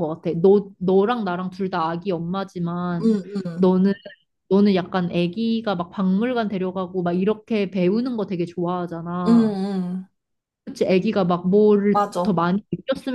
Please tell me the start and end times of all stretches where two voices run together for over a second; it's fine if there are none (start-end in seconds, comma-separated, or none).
none